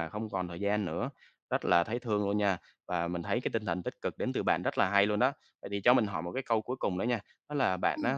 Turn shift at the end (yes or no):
no